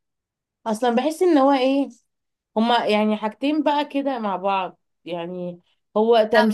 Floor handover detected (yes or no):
no